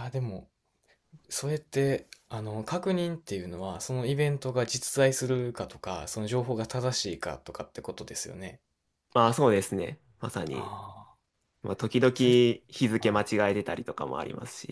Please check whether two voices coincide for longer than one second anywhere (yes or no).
no